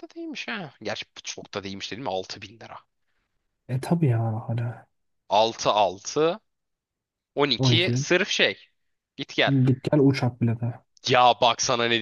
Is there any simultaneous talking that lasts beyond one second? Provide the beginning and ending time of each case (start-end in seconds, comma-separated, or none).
none